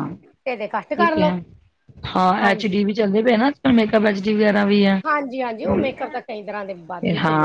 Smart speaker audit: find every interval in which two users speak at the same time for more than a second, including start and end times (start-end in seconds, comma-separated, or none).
none